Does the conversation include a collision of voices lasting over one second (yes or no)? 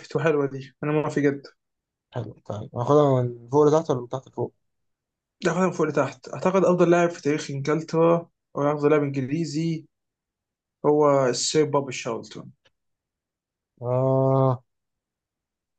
no